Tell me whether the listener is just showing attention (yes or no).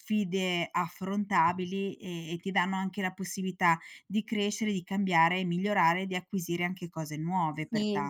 no